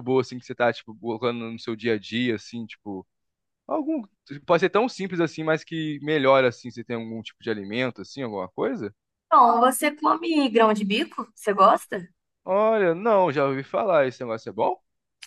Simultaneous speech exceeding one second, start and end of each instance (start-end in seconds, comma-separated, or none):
none